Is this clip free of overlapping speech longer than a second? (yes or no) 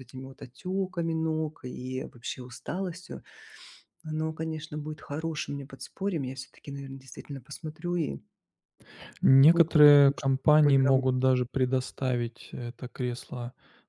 no